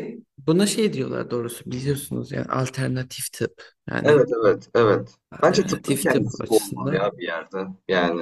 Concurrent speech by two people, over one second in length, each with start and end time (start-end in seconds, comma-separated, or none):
5.3-7.1